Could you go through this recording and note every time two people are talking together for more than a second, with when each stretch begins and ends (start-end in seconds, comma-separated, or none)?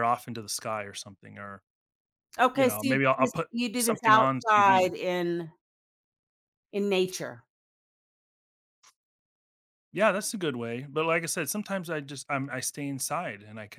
2.5-4.9